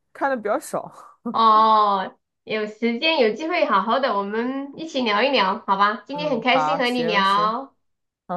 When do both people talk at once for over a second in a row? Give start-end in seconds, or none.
6.1-7.5